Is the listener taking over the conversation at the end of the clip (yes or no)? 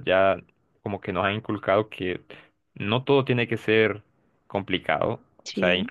no